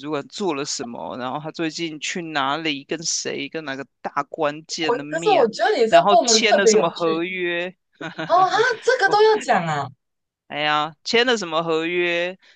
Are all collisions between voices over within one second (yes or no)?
no